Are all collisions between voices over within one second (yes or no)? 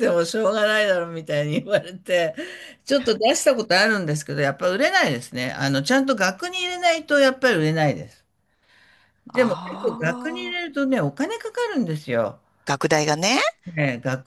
no